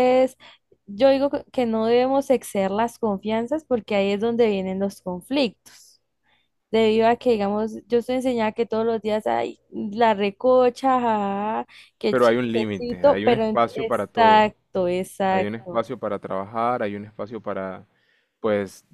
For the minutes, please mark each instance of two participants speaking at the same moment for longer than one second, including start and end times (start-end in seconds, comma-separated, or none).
12.1-14.5